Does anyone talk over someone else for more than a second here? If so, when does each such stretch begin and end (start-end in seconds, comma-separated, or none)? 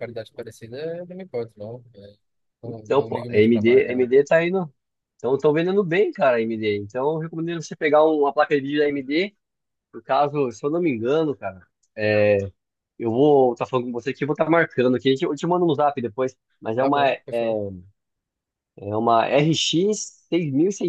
2.6-4.1